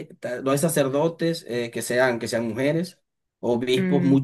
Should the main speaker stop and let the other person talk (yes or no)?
no